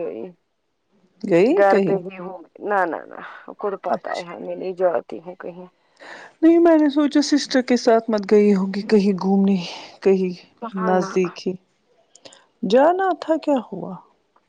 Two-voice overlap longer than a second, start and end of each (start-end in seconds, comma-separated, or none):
none